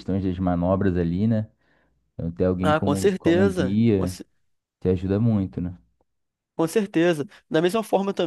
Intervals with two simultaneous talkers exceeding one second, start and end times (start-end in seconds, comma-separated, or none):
2.6-4.1